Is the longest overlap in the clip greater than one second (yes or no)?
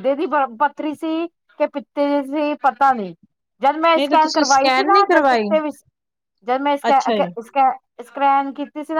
yes